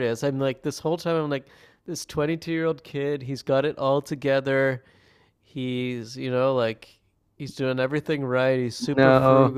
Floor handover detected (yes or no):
no